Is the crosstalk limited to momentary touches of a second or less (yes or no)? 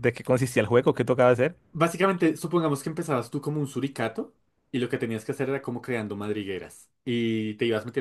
yes